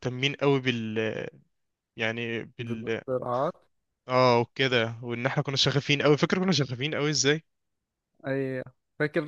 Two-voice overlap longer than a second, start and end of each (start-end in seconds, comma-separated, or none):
none